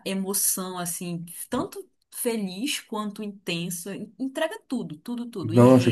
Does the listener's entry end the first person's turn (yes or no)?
yes